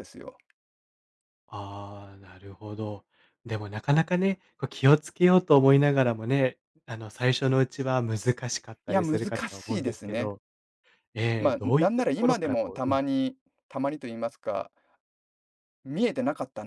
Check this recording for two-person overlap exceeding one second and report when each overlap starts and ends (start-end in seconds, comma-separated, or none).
8.9-10.3, 11.4-13.0